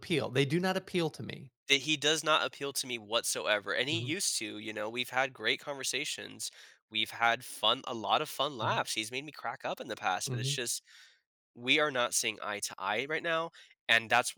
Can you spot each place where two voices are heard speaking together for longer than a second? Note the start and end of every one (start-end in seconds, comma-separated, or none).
none